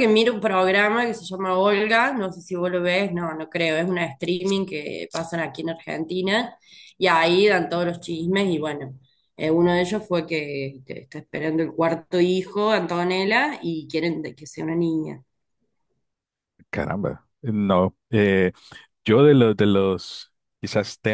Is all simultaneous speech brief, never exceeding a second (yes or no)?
yes